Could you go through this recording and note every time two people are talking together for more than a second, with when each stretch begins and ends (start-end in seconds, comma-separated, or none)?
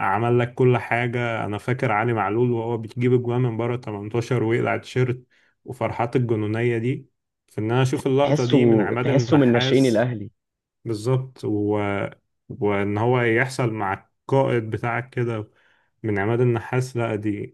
8.2-10.1